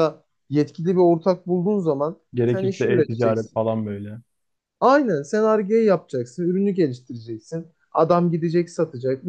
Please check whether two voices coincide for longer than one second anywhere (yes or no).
yes